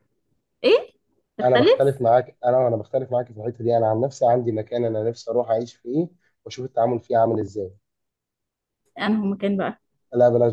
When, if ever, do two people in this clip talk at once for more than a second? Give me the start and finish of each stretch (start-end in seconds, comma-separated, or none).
none